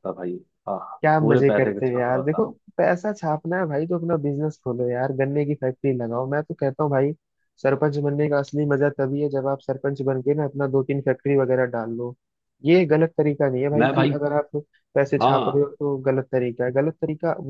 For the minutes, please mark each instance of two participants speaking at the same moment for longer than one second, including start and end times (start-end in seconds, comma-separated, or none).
1.0-2.5